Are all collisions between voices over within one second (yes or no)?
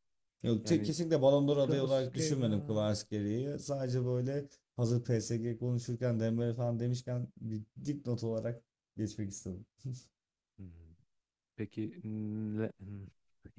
no